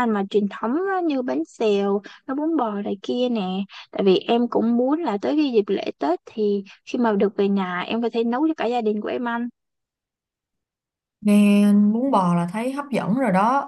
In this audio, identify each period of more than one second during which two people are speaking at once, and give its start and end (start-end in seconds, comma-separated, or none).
none